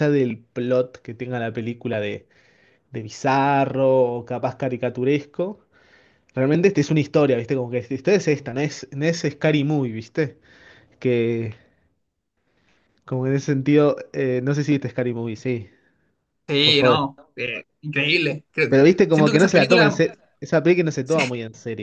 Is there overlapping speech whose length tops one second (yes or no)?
yes